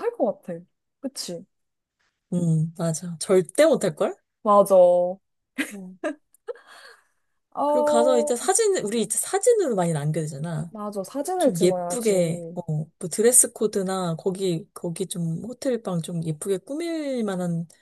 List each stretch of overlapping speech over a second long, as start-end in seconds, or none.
11.4-12.6